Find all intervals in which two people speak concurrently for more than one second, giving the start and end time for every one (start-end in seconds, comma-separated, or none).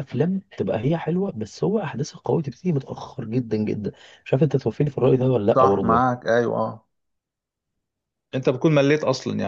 none